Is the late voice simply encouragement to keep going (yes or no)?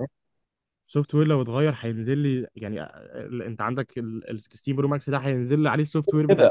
no